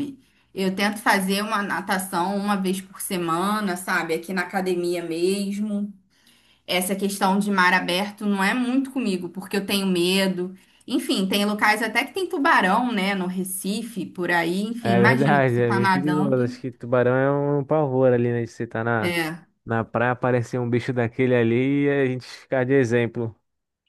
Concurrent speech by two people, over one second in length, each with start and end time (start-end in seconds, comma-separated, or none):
14.8-16.6